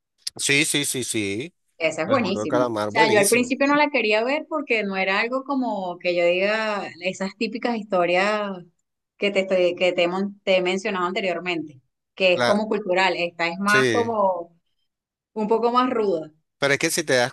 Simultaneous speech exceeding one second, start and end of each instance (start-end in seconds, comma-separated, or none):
2.1-3.5